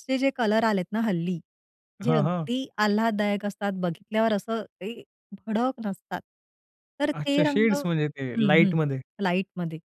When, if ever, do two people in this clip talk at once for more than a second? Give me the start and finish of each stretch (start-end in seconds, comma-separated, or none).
7.2-8.7